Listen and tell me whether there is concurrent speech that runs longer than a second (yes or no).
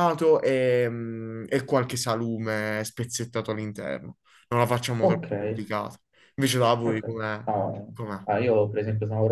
no